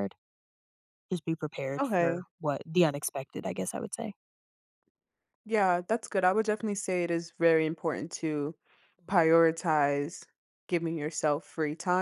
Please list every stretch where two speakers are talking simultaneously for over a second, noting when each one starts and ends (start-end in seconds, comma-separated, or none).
none